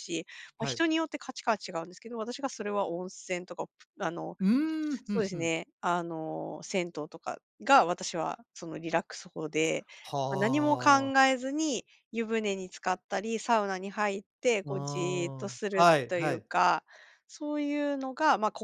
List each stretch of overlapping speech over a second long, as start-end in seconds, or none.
14.7-16.5